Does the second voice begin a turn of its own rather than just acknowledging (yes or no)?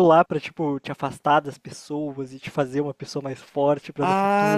yes